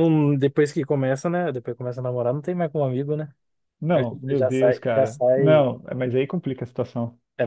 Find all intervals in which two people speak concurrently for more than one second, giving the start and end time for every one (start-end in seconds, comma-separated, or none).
3.9-5.7